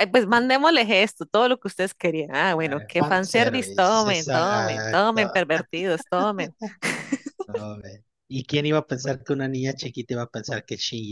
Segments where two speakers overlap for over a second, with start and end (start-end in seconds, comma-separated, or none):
2.6-5.2